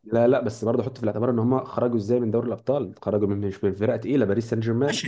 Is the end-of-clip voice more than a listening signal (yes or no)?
yes